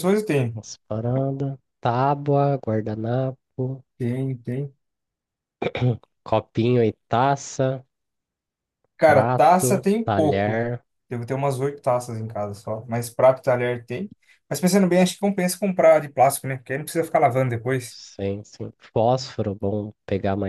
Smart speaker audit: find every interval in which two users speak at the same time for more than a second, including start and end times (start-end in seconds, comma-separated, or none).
9.1-10.6